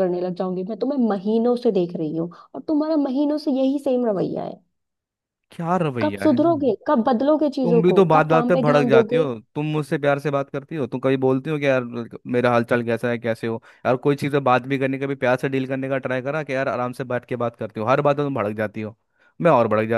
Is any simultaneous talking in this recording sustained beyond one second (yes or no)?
yes